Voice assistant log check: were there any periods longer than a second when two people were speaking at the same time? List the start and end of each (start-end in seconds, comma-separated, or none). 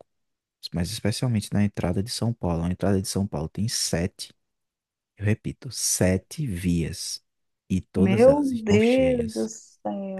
8.0-9.5